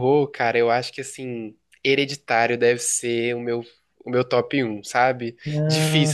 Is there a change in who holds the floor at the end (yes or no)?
no